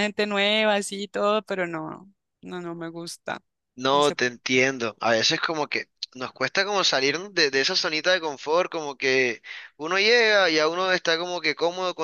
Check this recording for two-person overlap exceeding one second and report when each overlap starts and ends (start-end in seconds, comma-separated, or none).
none